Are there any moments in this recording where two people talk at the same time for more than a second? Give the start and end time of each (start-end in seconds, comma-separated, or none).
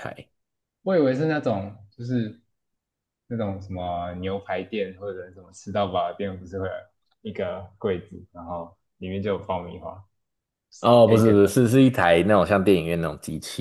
none